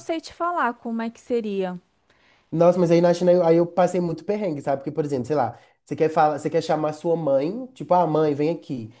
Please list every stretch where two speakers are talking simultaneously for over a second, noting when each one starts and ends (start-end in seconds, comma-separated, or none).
none